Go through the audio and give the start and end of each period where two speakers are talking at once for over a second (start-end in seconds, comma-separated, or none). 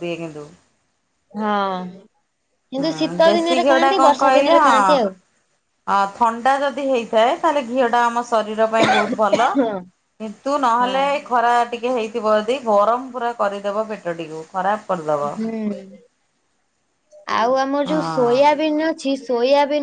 2.8-4.9